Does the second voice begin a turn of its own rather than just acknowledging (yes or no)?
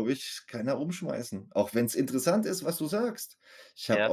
no